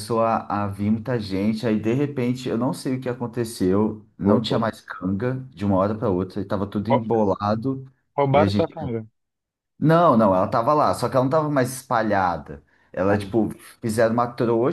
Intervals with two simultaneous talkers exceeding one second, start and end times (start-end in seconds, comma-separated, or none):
none